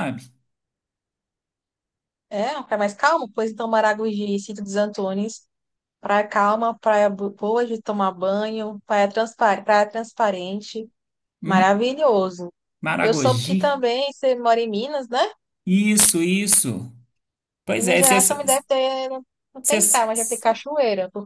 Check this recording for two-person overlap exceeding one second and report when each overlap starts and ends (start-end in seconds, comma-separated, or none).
none